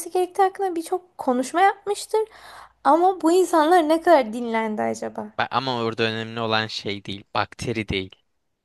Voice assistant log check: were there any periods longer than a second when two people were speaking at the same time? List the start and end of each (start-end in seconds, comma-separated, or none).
none